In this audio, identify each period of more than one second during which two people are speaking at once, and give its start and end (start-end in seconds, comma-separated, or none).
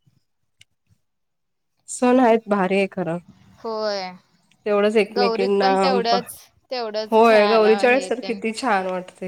7.1-8.4